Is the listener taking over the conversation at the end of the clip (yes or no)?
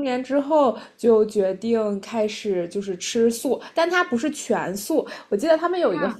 no